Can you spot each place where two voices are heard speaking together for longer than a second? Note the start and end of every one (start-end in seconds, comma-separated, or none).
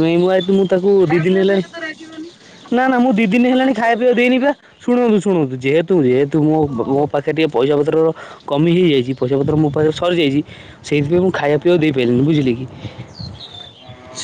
2.8-4.5